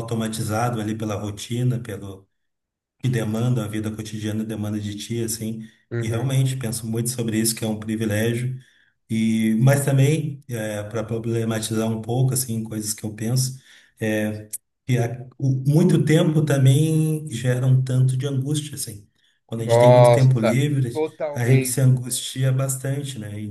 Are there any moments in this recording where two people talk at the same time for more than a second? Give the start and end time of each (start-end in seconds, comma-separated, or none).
19.6-22.3